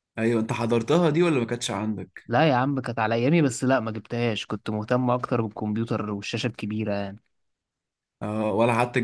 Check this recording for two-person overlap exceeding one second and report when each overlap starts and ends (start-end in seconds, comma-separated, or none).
none